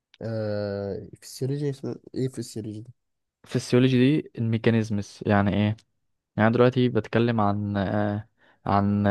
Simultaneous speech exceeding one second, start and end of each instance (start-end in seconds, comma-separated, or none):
none